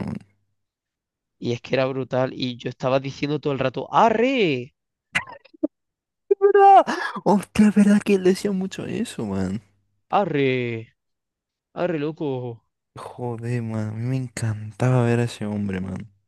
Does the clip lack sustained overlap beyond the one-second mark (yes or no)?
yes